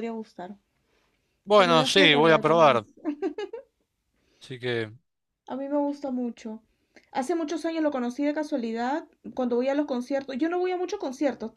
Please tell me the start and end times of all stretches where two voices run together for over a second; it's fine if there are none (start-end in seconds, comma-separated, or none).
1.5-2.8